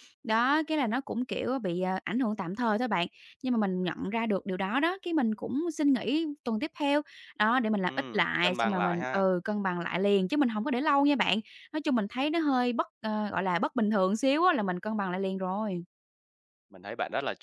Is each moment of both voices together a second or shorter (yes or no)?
no